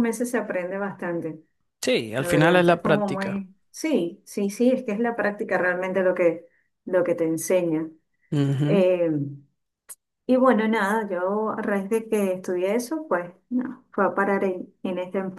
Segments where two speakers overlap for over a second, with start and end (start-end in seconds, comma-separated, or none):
2.2-3.4